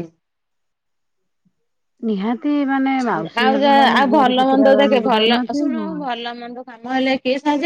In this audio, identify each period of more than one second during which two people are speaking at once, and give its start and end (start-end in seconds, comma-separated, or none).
3.4-6.0